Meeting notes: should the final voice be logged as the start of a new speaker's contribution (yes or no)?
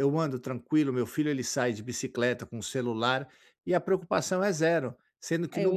no